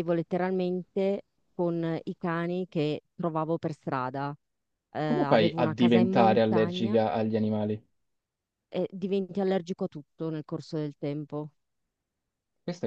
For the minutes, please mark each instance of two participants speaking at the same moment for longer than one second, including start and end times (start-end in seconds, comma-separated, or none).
5.0-7.0